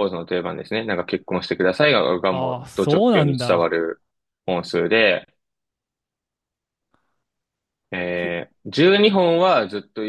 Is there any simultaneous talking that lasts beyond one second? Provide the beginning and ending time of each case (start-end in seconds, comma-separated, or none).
2.3-3.7